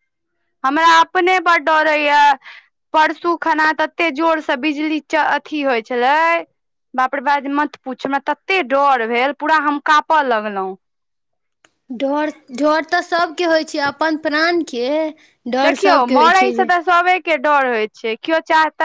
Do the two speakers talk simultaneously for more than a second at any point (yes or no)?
no